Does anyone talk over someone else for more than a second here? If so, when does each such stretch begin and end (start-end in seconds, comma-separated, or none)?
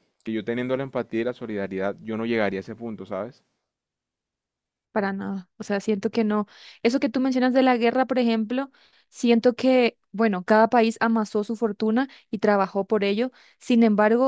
none